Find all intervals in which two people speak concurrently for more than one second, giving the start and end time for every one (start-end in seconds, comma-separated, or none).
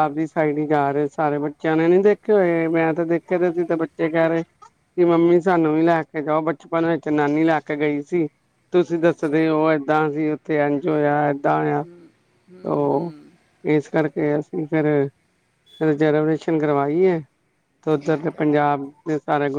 none